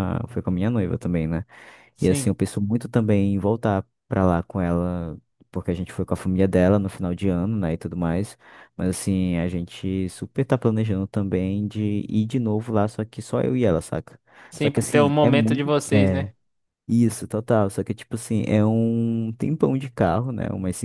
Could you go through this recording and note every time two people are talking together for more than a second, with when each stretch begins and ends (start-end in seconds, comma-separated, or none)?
14.6-16.3